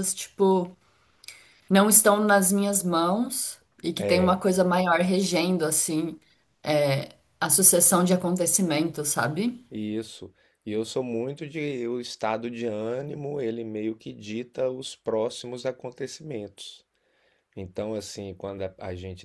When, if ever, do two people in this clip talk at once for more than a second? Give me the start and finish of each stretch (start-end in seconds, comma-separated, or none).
none